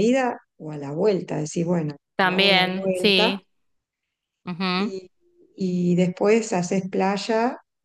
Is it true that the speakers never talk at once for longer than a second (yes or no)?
no